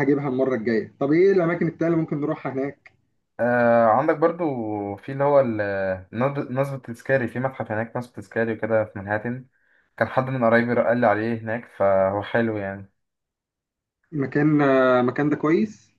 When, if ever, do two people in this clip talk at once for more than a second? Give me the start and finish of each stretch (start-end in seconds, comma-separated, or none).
none